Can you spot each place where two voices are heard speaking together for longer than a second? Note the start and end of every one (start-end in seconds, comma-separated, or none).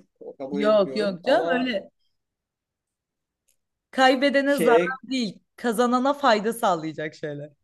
0.5-1.7